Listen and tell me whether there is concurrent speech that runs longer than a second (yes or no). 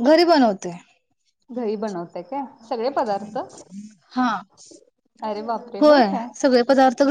no